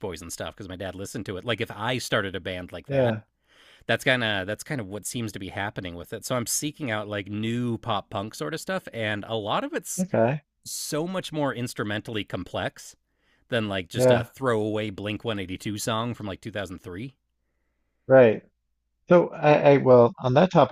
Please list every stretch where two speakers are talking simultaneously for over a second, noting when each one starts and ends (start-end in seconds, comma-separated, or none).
none